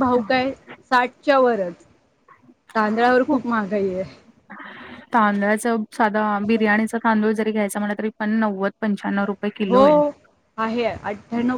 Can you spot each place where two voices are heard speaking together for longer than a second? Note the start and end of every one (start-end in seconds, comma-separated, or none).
none